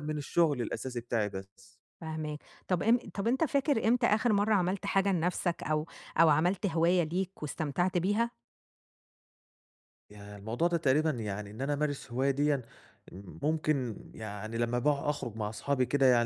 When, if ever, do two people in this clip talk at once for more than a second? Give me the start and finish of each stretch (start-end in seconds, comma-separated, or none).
none